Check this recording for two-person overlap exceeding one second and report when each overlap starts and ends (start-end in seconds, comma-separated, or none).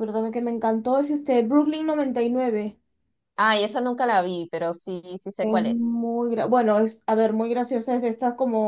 none